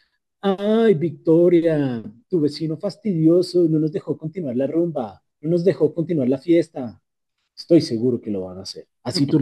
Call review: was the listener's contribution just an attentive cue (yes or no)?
yes